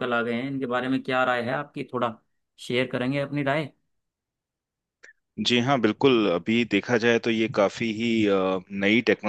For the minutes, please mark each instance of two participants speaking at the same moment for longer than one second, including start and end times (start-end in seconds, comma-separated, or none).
none